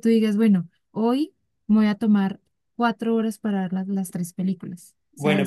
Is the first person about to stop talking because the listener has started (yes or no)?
yes